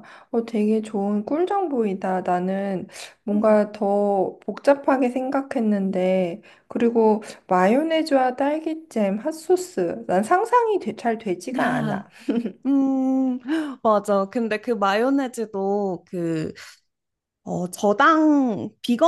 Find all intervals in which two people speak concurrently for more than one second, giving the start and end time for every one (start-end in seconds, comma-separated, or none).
none